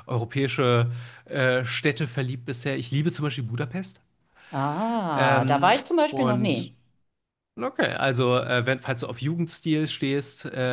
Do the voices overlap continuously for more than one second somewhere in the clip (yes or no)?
yes